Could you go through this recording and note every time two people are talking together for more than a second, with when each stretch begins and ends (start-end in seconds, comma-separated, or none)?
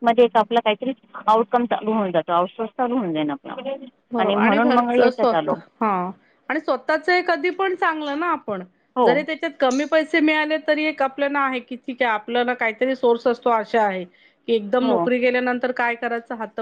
none